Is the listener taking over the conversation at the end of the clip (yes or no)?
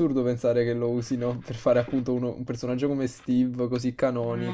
no